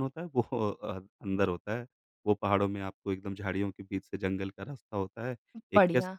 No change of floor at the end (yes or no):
yes